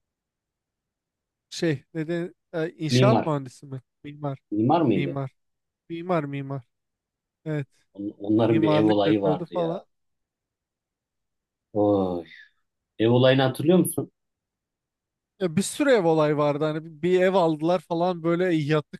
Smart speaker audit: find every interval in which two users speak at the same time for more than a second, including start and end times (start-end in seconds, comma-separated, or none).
8.5-9.8